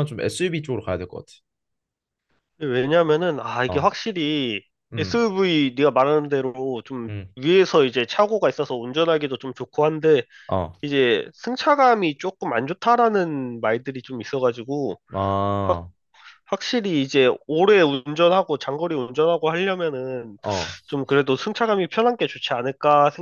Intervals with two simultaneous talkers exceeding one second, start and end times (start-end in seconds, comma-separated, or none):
none